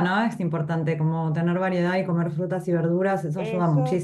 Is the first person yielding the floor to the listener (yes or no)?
yes